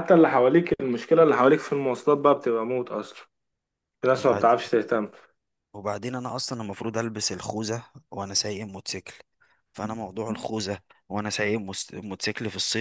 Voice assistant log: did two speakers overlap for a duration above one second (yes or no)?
no